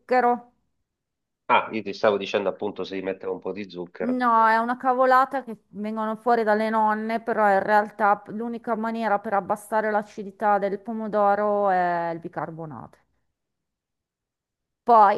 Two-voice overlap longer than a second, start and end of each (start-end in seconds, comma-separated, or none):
none